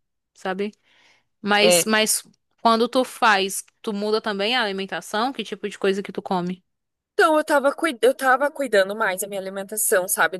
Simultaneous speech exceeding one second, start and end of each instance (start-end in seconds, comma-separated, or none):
none